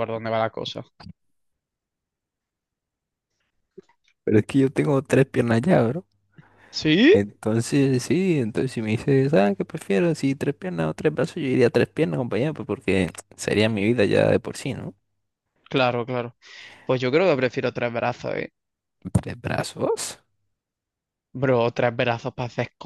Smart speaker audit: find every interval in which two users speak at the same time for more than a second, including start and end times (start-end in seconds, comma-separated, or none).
none